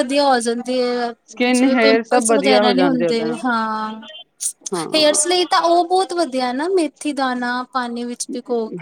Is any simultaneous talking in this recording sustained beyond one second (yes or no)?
yes